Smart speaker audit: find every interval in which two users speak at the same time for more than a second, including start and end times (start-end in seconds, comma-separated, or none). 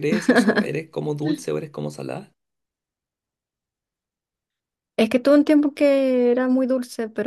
none